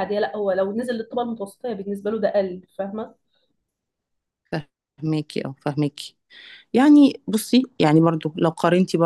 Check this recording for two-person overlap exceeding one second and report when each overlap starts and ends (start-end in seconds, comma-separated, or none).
none